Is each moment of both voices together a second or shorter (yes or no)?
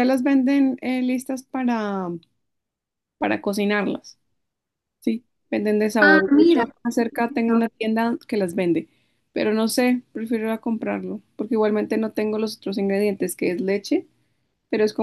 no